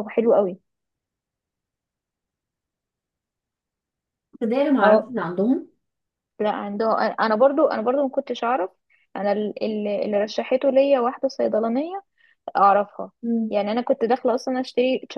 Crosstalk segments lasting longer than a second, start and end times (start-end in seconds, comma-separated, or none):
none